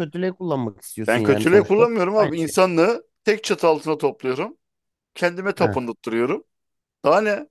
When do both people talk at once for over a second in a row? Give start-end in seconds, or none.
1.1-2.5